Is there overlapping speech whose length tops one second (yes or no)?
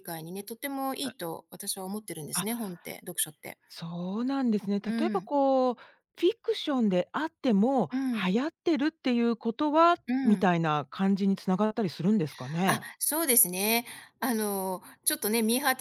no